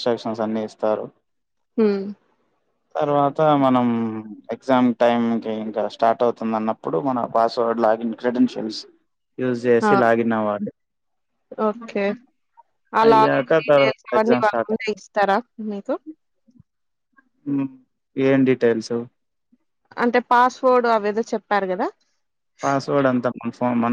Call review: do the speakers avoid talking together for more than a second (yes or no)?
no